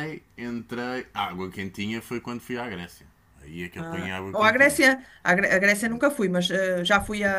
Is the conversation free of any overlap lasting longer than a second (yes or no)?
yes